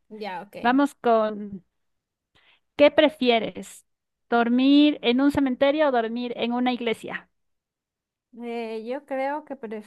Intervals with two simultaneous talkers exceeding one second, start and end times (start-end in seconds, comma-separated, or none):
none